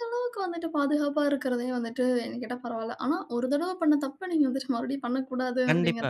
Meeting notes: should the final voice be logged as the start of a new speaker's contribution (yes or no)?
yes